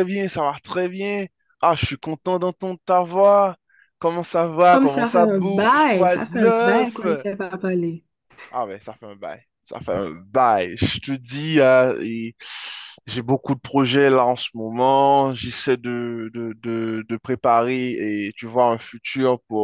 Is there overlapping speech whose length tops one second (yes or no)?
yes